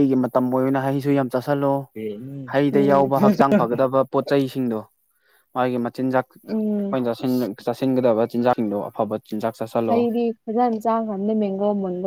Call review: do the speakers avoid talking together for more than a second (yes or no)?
yes